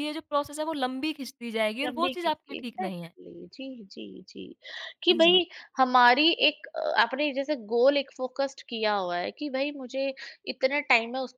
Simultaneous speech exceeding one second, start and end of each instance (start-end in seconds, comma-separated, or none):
1.8-3.1